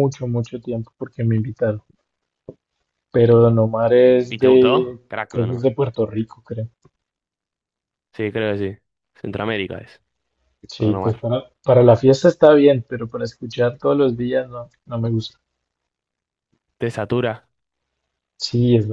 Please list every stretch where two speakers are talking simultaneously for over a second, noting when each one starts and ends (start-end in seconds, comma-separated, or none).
4.3-5.7